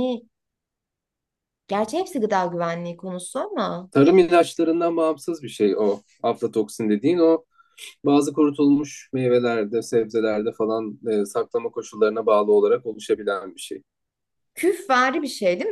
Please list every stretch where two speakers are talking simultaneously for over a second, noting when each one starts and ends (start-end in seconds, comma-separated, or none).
none